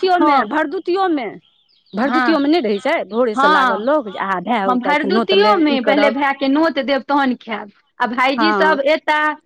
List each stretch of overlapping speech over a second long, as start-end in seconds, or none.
4.7-6.2